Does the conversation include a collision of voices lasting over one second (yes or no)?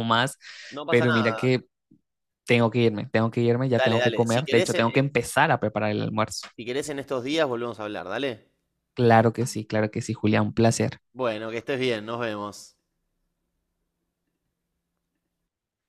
yes